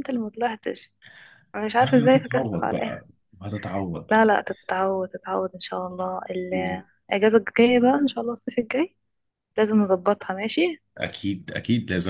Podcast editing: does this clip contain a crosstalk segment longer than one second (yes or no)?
yes